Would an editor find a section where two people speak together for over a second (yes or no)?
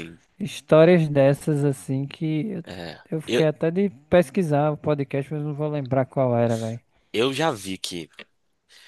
no